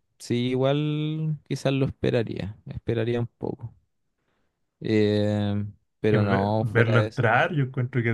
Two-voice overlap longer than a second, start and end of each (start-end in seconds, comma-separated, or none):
6.1-7.5